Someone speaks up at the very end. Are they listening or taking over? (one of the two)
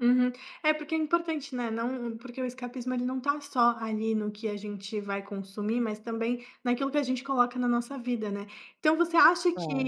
listening